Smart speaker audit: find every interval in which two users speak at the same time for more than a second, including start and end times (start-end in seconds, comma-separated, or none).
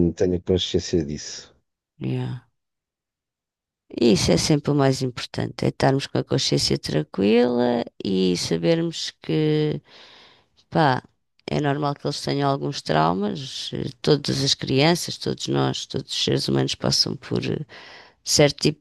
none